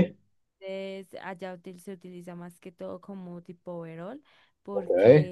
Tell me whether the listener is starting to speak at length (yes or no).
no